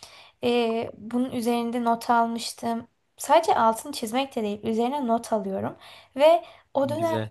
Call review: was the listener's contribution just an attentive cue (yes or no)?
yes